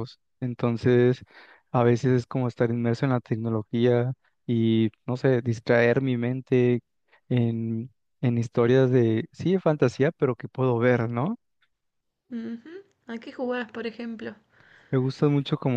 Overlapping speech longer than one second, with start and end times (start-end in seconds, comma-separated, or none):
none